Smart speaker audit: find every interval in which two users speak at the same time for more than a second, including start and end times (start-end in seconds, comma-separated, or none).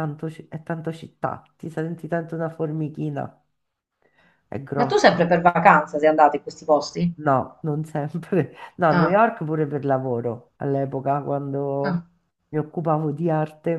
none